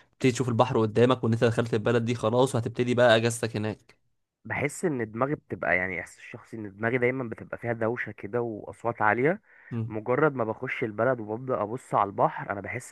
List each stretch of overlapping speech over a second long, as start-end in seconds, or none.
none